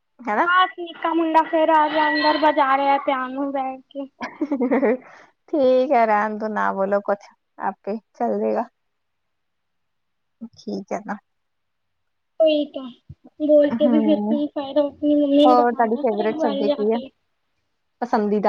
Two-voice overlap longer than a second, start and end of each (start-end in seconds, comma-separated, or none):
15.5-17.0